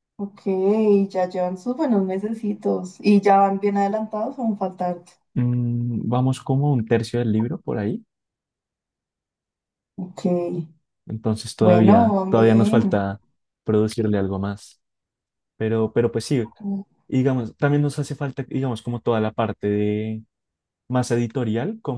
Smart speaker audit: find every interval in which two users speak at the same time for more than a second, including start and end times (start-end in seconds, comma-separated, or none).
11.6-13.1